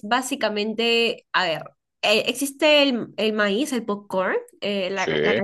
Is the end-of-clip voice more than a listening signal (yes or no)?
no